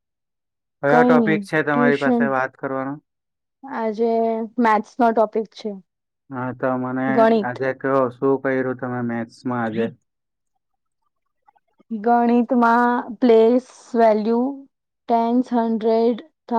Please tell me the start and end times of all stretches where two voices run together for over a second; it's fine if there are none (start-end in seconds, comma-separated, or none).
0.9-2.3